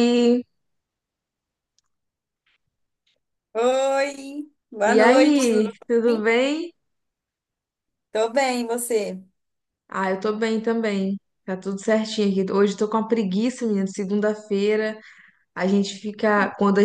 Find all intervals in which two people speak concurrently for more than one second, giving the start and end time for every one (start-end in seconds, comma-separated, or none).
4.8-6.3